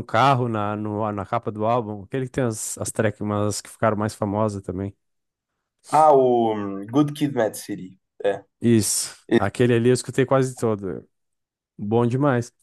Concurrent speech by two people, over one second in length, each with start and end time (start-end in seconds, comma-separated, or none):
none